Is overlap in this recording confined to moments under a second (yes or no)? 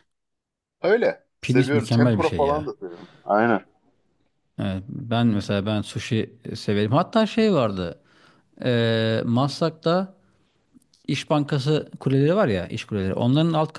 no